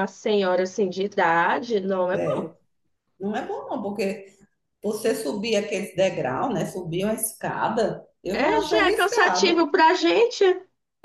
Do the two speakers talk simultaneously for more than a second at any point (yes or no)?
yes